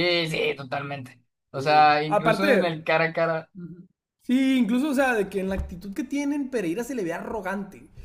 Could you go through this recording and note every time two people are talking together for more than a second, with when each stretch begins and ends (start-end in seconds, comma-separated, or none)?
1.5-2.9